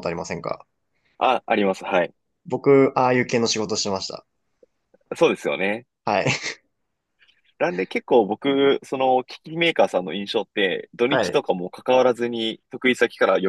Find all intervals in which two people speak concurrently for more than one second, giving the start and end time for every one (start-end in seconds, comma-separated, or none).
none